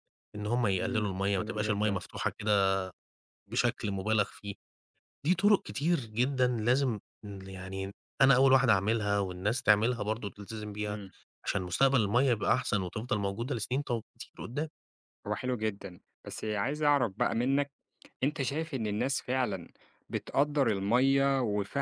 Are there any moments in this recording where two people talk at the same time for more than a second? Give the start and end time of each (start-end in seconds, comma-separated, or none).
0.8-2.0